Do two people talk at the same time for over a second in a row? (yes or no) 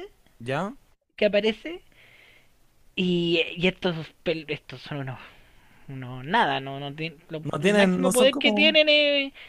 yes